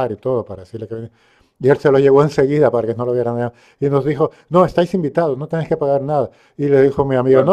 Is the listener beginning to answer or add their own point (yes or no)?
no